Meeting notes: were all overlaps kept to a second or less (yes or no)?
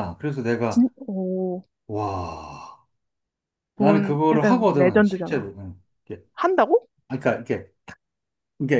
no